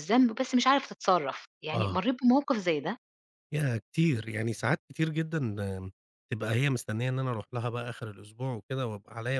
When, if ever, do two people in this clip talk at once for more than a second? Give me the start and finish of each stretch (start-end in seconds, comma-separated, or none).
none